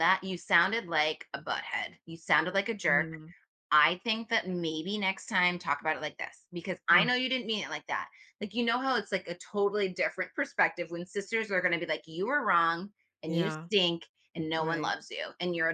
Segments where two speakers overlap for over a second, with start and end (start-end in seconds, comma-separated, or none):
none